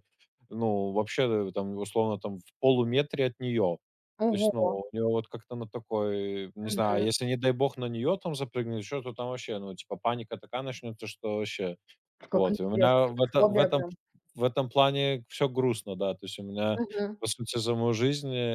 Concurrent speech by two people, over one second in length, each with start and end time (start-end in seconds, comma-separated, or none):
12.3-13.8